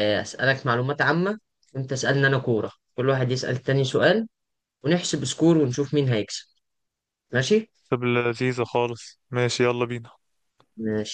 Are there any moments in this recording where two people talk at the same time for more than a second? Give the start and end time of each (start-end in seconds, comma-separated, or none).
none